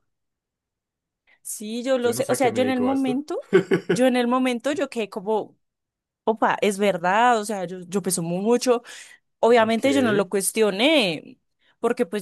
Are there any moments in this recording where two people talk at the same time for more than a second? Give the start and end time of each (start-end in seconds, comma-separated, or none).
2.0-3.2